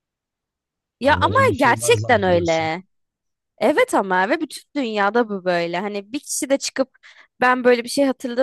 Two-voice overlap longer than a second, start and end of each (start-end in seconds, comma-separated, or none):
1.0-2.7